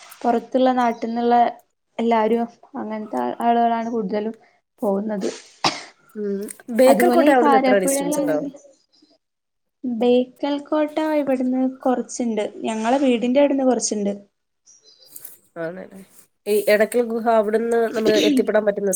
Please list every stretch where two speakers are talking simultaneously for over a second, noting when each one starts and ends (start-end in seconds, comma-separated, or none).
6.9-8.3